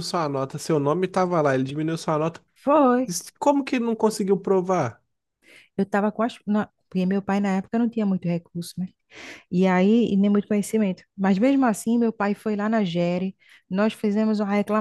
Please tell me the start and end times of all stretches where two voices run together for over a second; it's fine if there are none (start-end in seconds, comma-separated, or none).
none